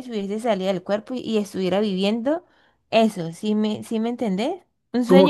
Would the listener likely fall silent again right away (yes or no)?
no